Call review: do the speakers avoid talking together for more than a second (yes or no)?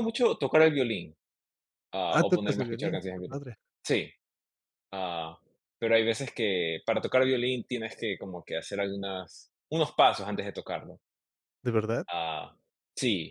no